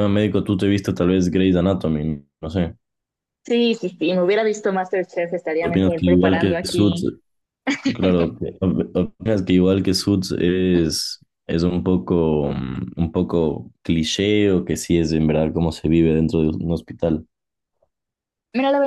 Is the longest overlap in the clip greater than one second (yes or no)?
yes